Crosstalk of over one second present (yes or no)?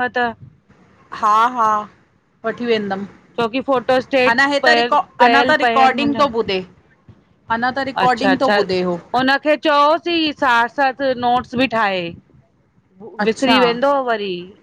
yes